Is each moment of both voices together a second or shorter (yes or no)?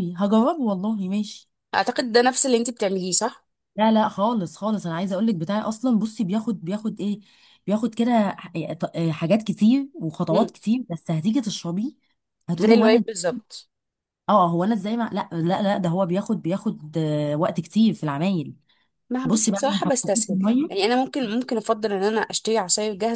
no